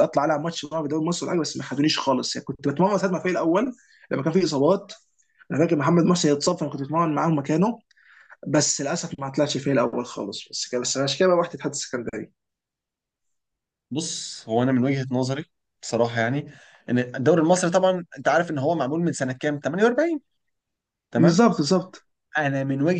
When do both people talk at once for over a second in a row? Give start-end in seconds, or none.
none